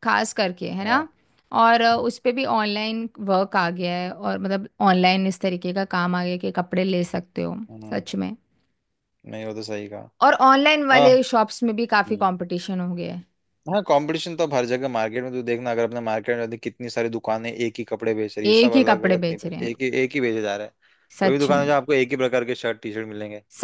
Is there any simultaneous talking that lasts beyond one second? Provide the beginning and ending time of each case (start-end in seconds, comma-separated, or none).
18.5-19.7